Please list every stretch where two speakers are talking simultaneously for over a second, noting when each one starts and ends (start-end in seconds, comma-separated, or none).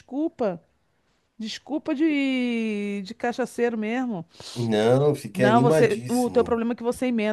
5.3-6.6